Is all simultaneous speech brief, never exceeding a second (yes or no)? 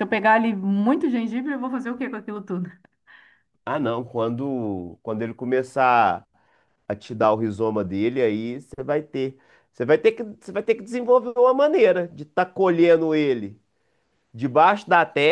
yes